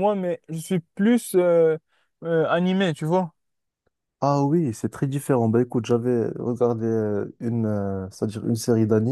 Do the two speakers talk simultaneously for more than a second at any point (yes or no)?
no